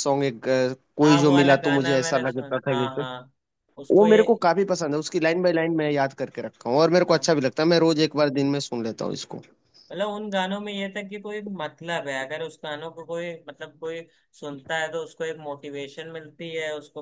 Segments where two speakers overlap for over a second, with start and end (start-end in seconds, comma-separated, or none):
1.0-3.0